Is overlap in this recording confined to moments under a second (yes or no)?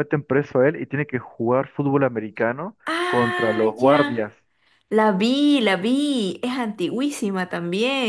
no